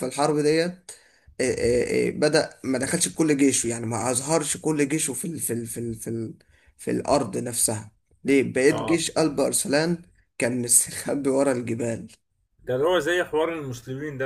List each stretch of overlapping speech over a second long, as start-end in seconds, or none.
none